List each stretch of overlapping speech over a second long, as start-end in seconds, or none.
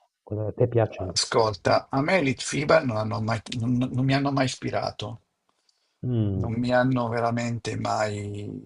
none